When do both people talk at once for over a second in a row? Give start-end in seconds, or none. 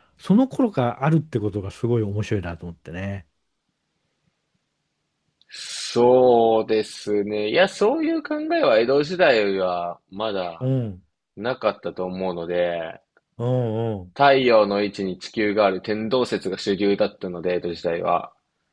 none